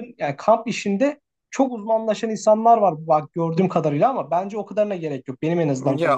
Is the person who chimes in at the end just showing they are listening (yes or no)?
no